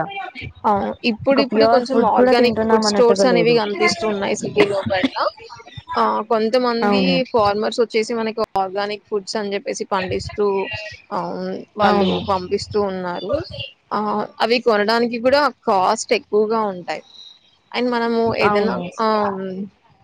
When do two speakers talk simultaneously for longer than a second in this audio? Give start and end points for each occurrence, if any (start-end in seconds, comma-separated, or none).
1.3-3.5